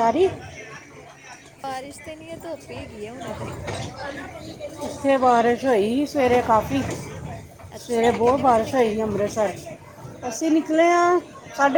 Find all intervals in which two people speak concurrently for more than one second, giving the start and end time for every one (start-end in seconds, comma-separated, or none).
7.8-9.3